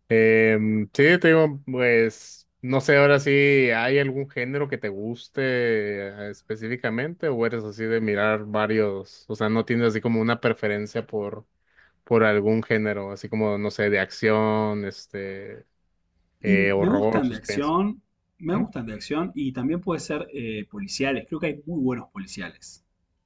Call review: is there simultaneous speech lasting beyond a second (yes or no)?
yes